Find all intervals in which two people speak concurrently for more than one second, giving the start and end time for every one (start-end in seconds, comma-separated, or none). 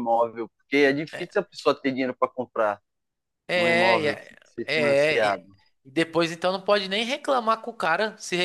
3.5-5.4